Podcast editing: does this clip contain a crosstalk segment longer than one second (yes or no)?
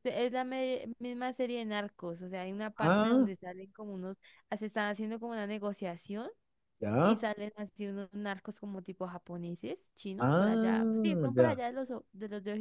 yes